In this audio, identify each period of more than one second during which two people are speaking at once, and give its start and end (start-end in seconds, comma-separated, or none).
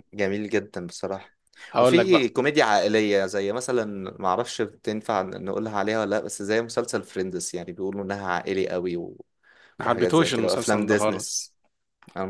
9.8-11.4